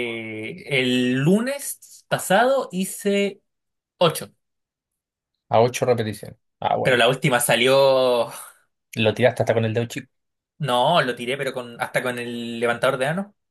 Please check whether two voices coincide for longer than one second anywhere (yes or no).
no